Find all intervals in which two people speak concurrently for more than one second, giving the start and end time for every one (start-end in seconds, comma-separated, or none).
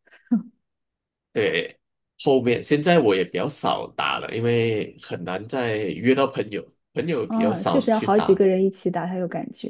7.2-8.5